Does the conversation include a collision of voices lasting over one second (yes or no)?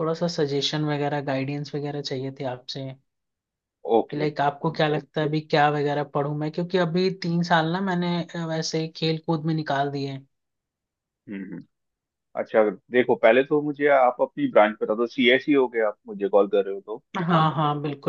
no